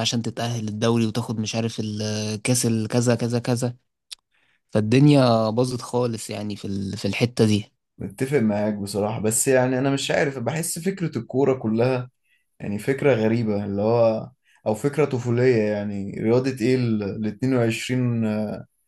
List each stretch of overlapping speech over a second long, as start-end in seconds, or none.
none